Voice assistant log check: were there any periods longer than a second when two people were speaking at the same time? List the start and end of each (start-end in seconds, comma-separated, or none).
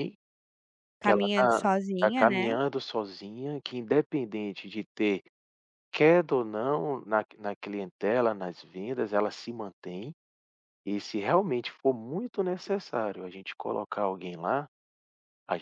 1.0-2.5